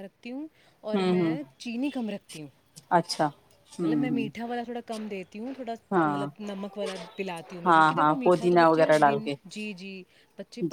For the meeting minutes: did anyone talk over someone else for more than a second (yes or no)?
yes